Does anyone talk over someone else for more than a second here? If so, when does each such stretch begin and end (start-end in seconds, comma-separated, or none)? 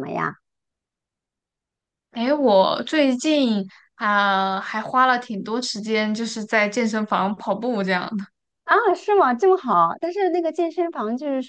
none